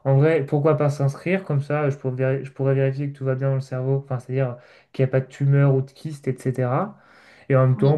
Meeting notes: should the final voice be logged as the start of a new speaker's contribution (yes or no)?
no